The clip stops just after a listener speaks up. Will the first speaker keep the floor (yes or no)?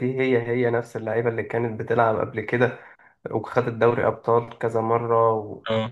yes